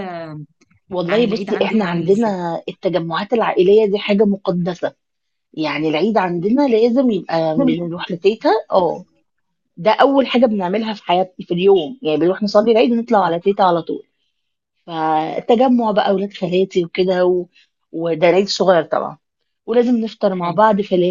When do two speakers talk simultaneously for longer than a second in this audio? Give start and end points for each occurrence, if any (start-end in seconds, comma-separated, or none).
1.1-2.4